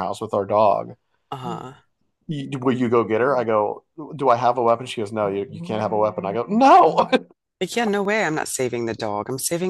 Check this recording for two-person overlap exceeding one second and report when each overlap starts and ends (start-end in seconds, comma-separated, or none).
none